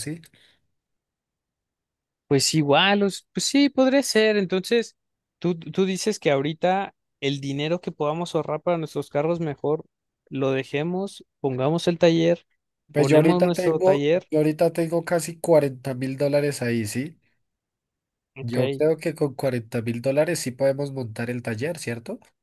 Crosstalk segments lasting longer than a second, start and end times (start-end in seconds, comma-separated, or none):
12.9-14.3